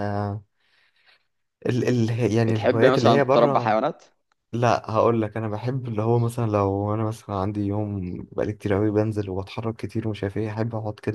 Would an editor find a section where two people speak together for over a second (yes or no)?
yes